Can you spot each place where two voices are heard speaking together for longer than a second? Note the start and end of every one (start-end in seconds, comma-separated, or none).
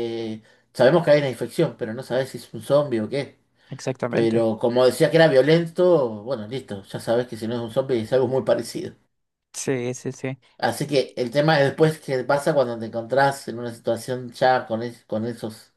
none